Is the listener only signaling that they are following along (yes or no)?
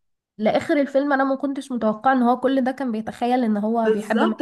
no